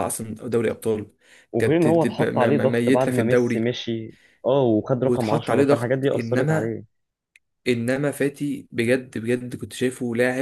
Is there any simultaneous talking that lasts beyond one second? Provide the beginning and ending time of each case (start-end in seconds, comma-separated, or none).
1.6-3.6, 5.0-6.7